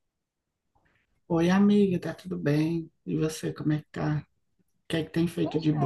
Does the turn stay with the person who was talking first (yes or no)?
yes